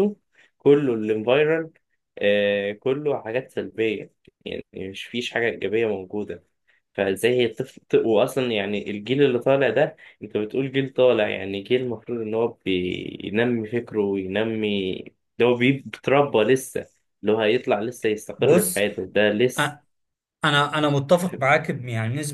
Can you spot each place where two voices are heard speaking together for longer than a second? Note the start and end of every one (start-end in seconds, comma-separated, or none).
none